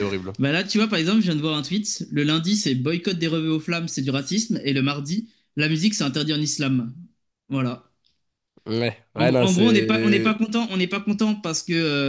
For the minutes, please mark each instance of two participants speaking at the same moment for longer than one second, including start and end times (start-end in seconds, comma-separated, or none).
9.1-10.3